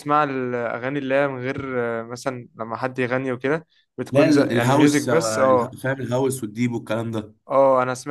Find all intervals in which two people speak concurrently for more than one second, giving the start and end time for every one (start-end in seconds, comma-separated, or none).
4.1-5.8